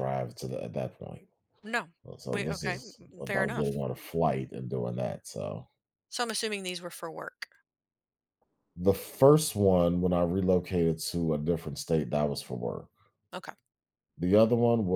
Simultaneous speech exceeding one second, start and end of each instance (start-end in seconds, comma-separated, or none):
2.3-3.8